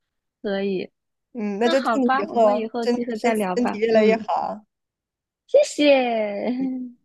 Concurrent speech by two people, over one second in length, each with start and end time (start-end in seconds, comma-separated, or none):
1.6-4.3